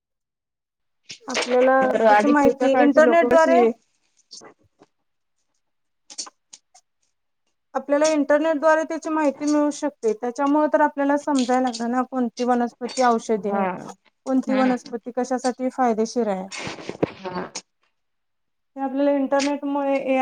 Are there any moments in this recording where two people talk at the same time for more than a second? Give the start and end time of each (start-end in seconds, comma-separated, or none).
1.9-3.6